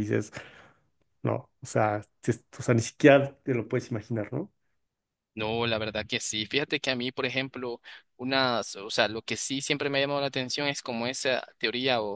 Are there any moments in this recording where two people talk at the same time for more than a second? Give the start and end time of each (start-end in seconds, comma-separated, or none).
none